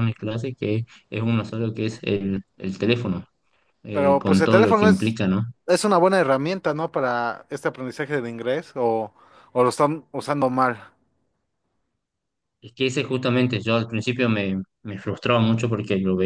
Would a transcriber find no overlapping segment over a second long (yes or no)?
no